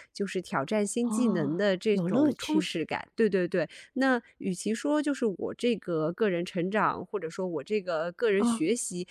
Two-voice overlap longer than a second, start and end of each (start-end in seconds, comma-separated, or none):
1.0-2.7